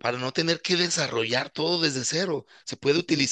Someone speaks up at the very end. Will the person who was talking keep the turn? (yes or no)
yes